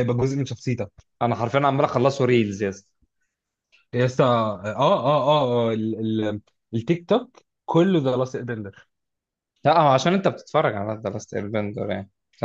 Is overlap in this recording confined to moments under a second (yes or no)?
yes